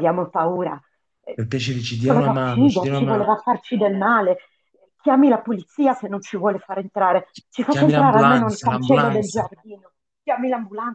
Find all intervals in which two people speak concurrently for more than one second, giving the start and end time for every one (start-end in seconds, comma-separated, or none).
2.0-3.3, 7.3-9.5